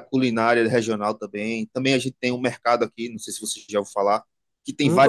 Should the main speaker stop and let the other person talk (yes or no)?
no